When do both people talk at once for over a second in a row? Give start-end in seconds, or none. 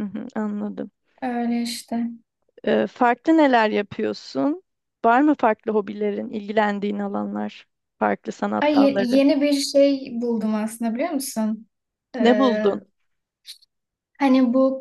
none